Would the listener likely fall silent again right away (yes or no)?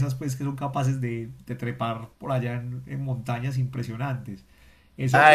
no